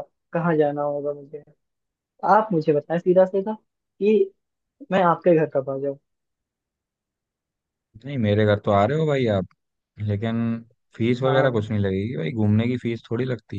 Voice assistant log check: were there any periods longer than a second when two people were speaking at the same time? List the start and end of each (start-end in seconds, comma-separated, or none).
none